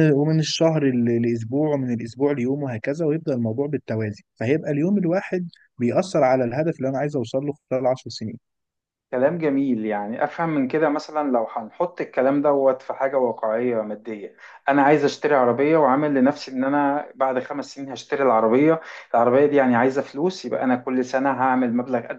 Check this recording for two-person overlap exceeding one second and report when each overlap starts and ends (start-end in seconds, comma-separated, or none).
none